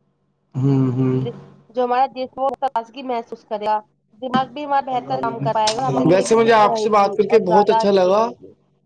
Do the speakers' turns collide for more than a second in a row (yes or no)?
yes